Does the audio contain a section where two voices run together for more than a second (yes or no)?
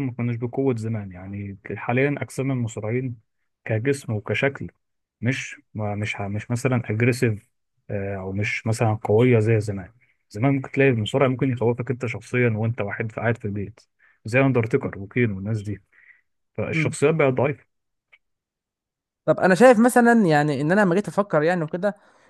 no